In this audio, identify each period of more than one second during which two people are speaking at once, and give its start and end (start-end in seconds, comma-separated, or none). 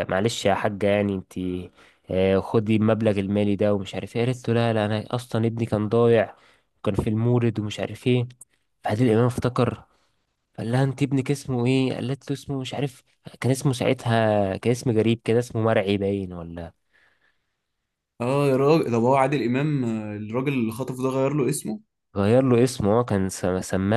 none